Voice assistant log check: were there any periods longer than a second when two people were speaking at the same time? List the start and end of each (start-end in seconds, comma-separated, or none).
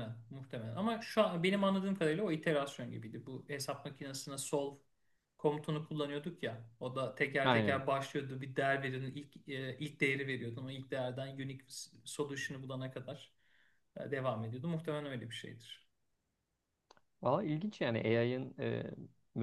none